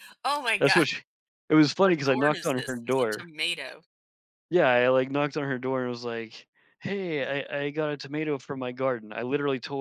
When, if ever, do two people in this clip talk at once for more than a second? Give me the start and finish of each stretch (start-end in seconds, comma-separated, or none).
1.8-3.3